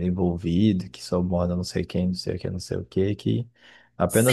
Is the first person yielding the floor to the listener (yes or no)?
yes